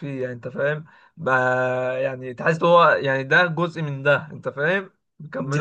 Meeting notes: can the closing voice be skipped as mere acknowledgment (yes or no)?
no